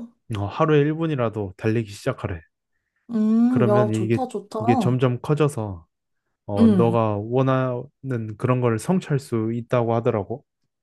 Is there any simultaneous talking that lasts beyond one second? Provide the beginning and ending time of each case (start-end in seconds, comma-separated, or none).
3.5-5.0